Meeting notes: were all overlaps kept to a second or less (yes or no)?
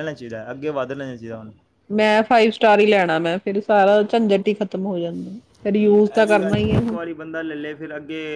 yes